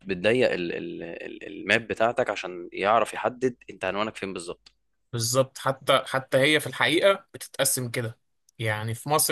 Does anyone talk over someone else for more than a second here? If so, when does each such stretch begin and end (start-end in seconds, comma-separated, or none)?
none